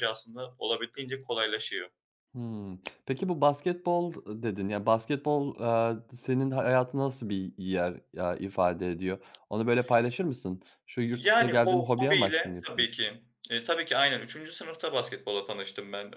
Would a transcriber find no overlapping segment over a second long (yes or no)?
no